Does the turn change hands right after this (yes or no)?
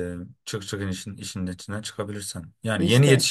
no